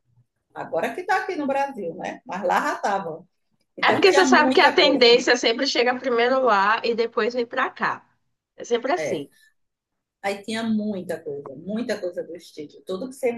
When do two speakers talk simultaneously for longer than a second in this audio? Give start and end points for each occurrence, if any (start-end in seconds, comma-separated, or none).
3.9-5.2